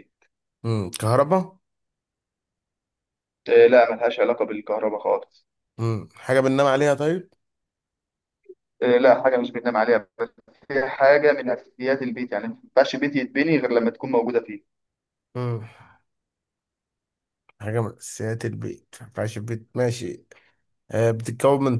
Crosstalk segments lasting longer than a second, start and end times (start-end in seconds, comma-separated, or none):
none